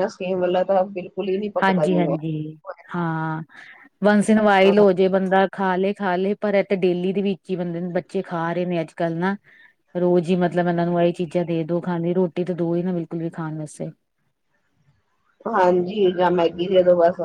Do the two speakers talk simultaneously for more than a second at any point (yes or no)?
no